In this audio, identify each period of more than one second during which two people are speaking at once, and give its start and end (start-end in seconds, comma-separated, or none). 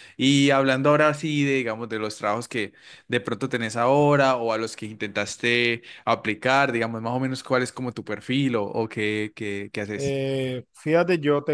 none